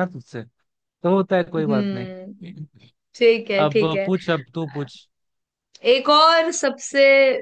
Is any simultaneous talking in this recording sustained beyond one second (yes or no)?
no